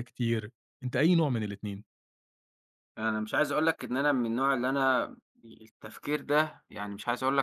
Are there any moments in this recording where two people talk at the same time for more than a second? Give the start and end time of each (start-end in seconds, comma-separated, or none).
none